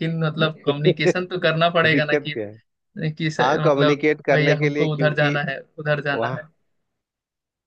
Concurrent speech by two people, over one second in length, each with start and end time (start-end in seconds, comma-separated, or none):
3.4-5.4